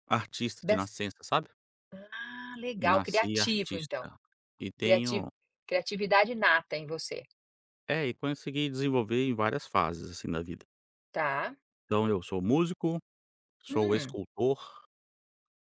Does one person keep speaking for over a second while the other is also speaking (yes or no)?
yes